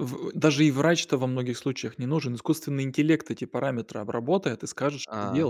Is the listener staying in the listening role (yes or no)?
yes